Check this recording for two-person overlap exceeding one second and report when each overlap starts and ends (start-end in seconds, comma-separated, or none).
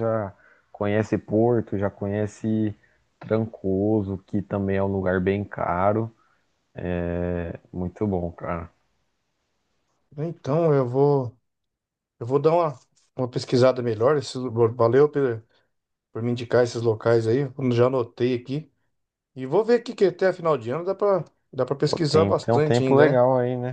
21.9-23.2